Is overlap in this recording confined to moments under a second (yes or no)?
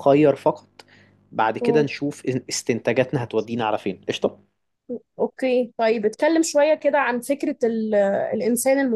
yes